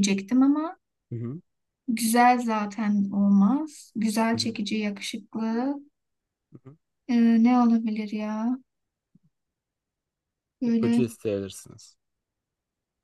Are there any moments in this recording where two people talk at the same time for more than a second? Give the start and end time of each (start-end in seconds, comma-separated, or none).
none